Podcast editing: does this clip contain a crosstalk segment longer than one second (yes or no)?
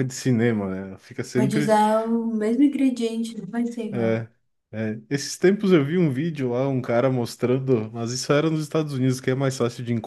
no